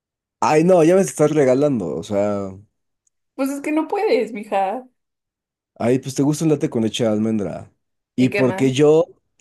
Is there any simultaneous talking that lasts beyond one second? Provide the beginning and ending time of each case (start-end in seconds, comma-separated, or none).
none